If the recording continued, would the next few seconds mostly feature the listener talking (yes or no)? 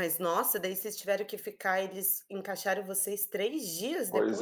yes